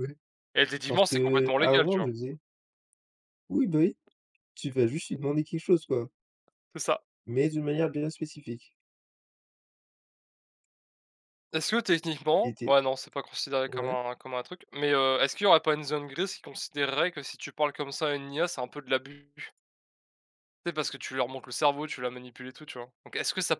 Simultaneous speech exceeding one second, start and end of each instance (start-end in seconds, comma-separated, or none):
0.9-2.1